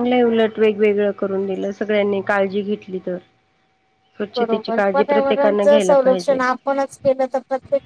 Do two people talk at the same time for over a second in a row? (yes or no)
yes